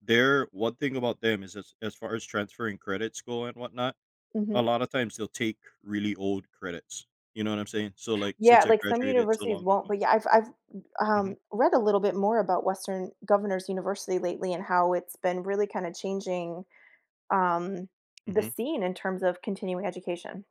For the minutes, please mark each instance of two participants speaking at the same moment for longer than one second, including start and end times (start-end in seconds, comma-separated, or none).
8.4-9.9